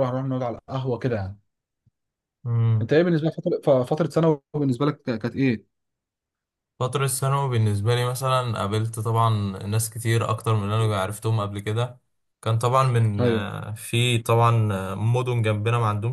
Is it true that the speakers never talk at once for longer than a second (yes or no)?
yes